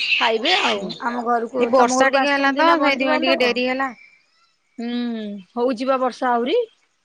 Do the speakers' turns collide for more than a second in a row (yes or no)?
yes